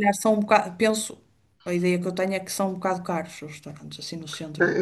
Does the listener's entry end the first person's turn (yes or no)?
yes